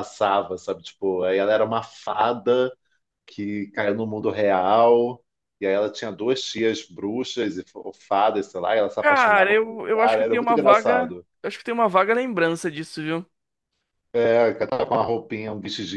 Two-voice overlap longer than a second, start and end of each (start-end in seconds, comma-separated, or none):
9.0-11.3